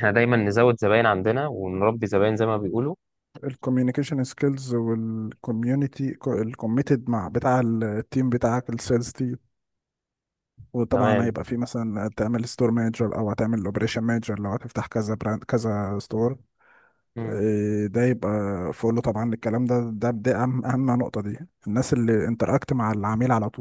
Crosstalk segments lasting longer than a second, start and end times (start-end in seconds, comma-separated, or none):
none